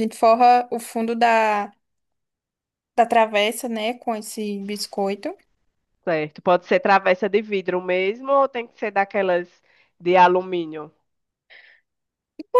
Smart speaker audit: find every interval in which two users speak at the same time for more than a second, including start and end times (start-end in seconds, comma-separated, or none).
none